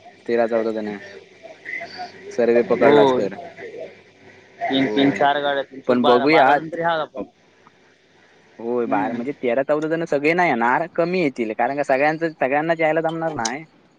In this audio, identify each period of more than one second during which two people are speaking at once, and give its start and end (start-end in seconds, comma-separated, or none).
none